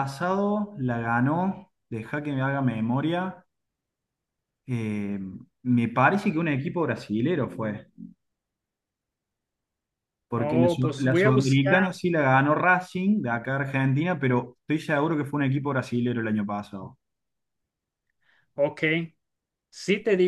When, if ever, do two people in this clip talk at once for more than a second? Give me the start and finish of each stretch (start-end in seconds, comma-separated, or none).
10.3-11.8